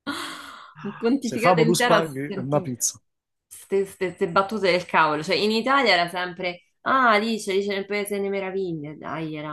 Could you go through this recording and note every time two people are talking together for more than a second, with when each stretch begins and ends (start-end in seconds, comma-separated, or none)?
1.2-2.7